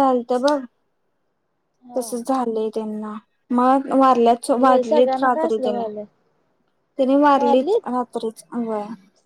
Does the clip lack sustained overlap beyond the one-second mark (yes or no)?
no